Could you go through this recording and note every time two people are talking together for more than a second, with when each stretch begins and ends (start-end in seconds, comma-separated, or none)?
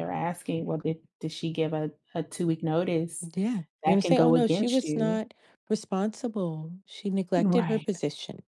3.8-5.2